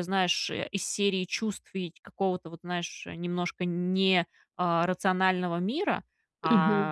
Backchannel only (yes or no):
yes